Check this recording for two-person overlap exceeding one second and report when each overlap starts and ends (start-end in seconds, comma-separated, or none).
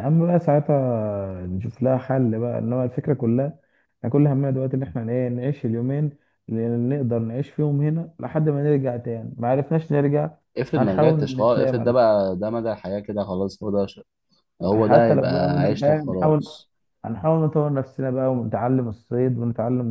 10.8-12.0, 14.7-16.4